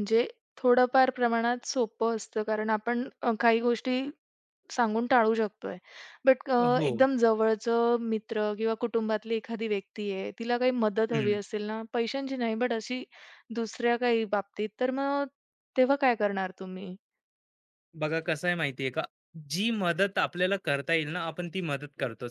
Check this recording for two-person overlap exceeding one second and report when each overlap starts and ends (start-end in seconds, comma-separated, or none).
none